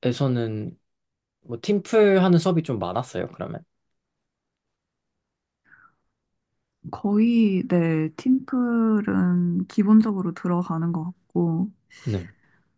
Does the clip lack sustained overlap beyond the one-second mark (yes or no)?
yes